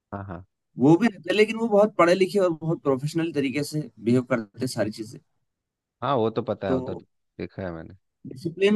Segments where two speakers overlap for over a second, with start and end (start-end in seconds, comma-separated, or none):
none